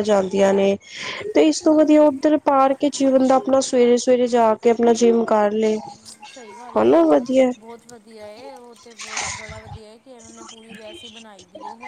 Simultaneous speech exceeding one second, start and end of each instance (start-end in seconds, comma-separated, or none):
none